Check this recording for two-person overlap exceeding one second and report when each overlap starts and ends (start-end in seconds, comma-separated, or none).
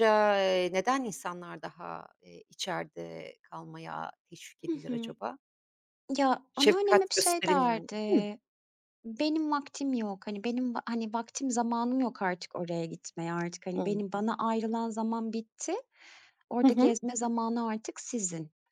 6.5-8.2